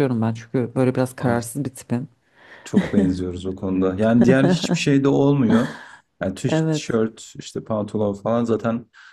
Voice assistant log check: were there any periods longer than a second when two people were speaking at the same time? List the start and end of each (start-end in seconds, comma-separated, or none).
none